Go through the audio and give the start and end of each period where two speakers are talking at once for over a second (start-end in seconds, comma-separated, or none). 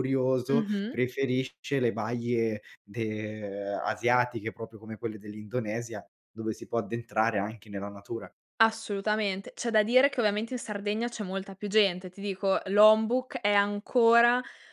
none